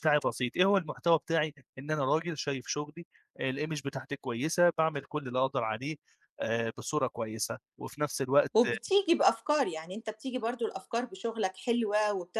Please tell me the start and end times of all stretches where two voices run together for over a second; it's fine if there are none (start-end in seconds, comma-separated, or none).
none